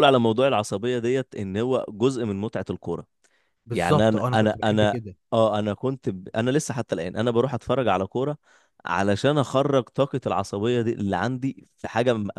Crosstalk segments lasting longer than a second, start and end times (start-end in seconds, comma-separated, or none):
3.7-5.0